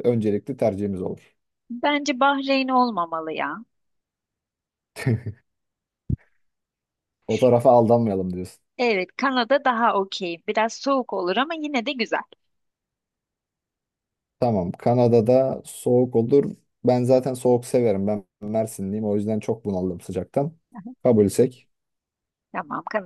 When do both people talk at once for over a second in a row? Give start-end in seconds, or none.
none